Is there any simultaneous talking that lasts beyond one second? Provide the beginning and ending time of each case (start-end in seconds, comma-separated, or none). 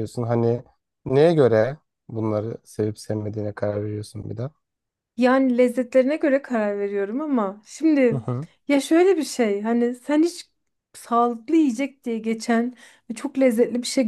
none